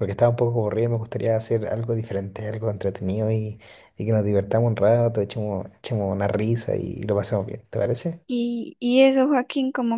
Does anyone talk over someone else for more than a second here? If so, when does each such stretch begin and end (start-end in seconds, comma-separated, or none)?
none